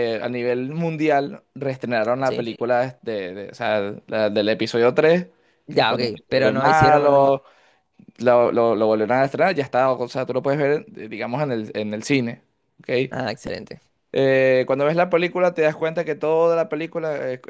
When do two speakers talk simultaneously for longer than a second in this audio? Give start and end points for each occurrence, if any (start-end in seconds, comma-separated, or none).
5.7-7.3